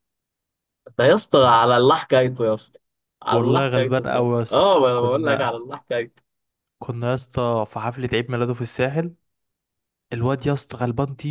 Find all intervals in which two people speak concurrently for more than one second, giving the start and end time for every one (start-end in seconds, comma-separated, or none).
3.3-5.5